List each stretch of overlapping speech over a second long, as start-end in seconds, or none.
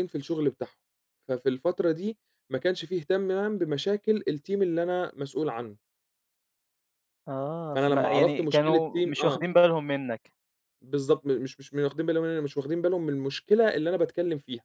7.8-9.4